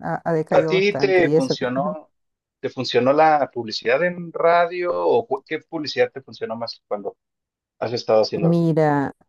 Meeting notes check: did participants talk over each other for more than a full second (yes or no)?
yes